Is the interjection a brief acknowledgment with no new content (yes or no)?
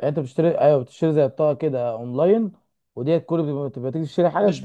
no